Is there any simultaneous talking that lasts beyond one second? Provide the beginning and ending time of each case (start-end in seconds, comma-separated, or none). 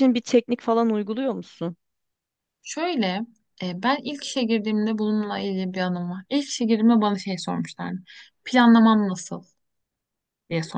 none